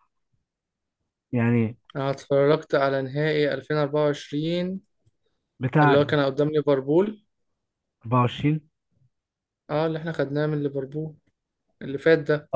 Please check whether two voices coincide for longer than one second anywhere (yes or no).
no